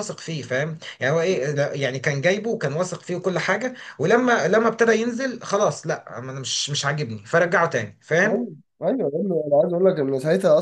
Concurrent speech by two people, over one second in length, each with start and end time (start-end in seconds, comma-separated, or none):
none